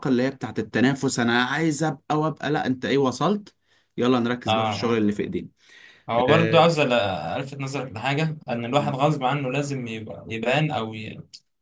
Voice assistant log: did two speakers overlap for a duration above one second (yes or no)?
no